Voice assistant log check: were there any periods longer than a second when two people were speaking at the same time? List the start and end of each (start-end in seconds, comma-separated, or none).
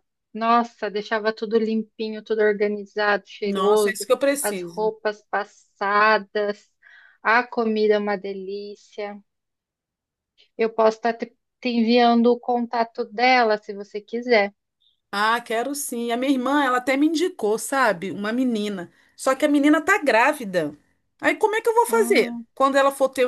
3.4-4.9